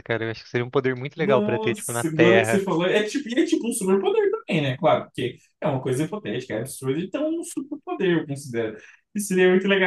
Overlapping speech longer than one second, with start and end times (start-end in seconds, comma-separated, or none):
1.2-2.6